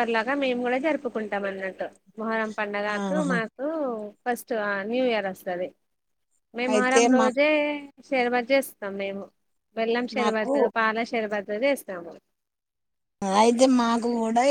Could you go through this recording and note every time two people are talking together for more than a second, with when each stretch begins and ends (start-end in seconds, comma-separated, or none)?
none